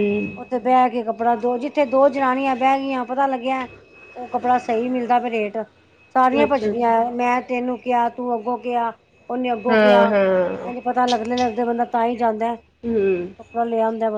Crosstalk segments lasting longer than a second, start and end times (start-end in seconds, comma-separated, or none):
none